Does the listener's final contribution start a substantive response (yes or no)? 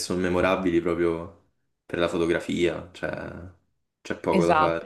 yes